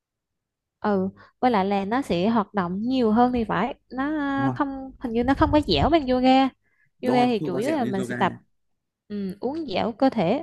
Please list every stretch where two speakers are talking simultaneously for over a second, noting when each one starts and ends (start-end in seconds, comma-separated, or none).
7.0-8.3